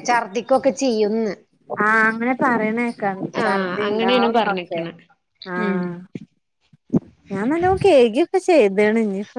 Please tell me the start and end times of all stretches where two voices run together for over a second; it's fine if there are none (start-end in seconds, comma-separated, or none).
3.4-4.8